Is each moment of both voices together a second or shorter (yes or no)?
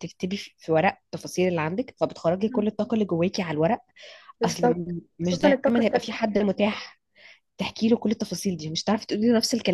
no